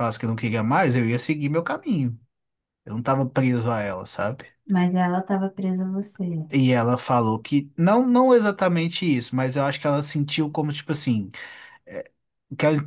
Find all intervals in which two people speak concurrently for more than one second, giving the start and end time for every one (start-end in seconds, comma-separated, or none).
none